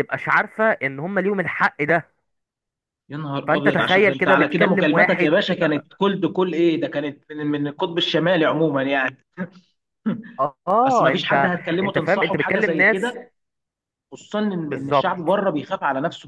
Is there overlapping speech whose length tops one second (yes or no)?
yes